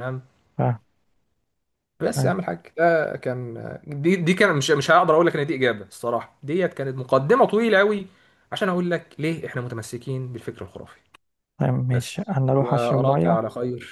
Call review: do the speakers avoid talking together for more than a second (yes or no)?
no